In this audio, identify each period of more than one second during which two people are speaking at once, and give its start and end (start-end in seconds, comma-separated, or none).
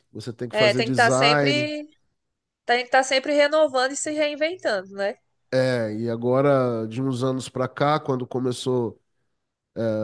0.5-1.7